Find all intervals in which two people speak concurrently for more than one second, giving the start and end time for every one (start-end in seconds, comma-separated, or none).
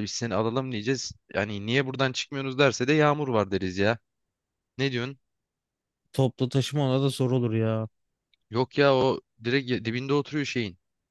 none